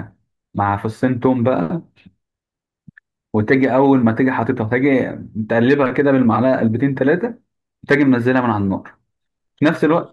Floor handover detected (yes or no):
no